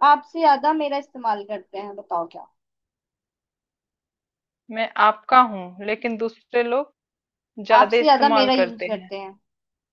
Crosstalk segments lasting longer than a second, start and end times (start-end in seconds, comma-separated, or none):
7.8-9.1